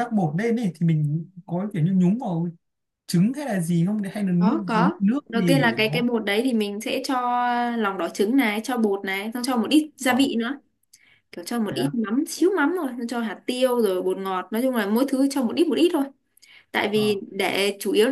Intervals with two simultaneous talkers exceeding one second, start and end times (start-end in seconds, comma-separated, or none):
4.4-6.0